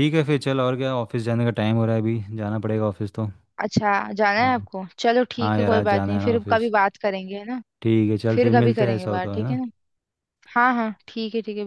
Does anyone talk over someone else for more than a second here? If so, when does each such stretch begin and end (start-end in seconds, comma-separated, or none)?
5.4-6.7, 8.3-9.6